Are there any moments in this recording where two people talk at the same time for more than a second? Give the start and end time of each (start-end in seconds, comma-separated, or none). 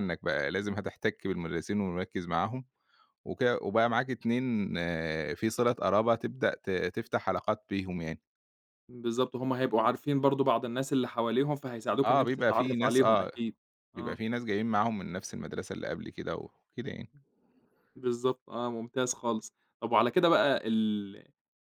12.0-13.3